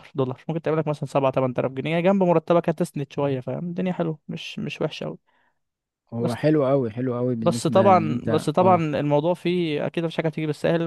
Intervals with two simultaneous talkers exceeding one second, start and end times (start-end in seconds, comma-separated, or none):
7.4-8.8